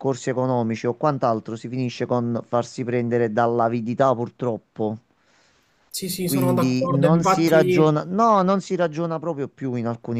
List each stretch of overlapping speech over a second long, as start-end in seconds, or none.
6.2-7.9